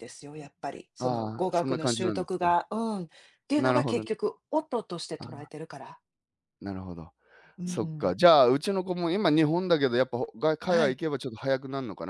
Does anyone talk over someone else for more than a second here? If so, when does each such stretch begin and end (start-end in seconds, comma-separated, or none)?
1.0-2.5